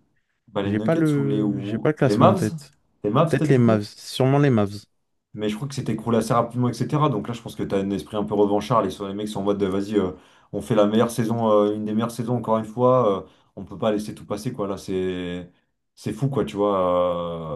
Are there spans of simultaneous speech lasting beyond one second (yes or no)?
yes